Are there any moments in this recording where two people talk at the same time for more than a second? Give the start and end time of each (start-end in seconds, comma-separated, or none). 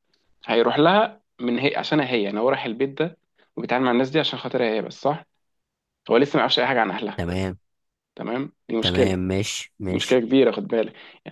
none